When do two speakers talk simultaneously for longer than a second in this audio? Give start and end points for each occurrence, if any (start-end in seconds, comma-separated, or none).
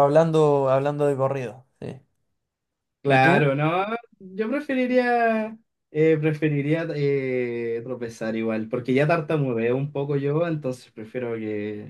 none